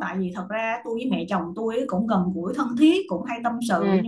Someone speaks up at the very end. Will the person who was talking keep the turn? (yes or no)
yes